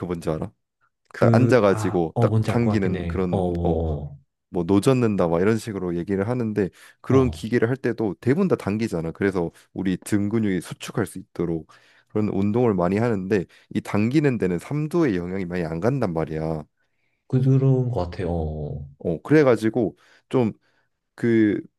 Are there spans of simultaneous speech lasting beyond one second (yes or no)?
yes